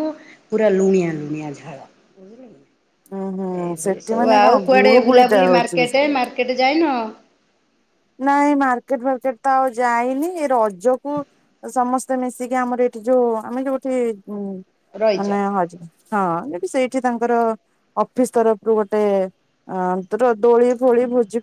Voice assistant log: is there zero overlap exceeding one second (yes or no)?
no